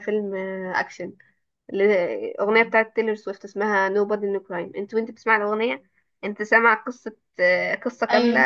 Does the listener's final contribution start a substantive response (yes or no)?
no